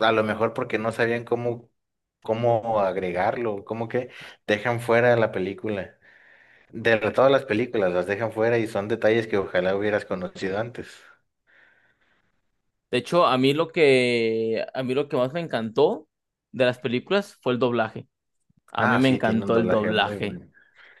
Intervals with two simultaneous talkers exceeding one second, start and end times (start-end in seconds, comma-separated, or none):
18.8-20.4